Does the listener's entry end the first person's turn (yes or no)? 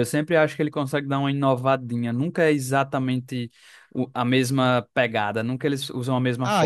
yes